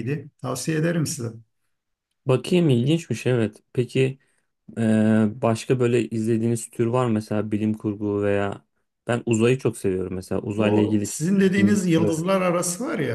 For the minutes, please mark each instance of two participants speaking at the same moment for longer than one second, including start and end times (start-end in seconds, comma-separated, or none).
10.6-12.2